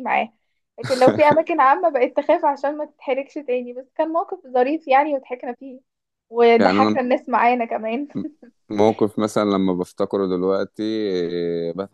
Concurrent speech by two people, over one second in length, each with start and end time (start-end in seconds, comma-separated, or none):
none